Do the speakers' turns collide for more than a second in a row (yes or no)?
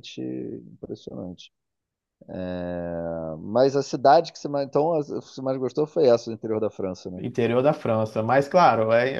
no